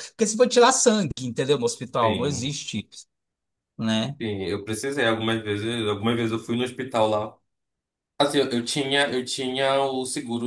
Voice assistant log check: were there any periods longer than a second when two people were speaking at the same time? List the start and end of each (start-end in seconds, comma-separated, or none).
none